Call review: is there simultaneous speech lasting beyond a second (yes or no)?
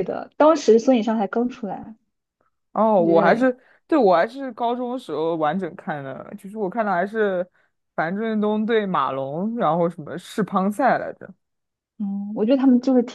no